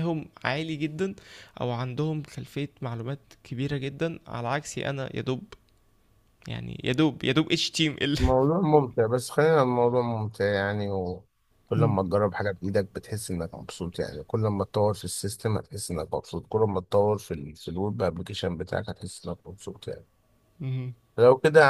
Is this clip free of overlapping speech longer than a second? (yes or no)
yes